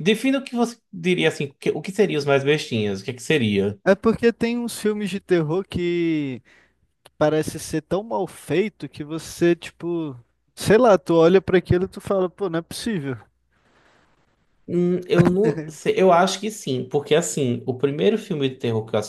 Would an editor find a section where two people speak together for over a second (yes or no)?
no